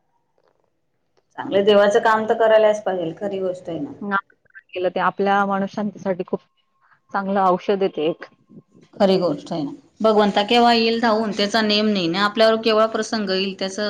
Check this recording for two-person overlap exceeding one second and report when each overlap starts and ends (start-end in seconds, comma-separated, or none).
none